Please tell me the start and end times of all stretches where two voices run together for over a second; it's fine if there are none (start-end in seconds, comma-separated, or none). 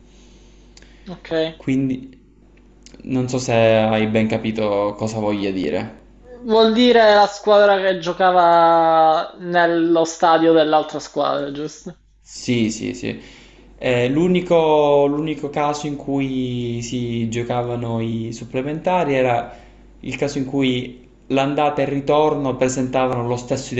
none